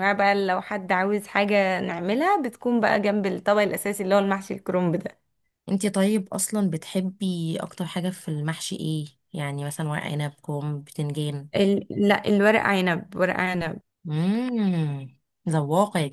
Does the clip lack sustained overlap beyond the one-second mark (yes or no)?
yes